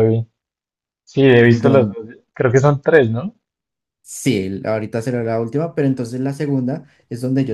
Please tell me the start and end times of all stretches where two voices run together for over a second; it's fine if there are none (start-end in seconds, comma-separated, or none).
none